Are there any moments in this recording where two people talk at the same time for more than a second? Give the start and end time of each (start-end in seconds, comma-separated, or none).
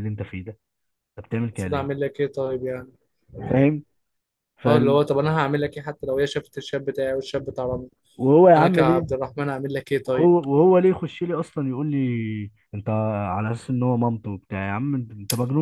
none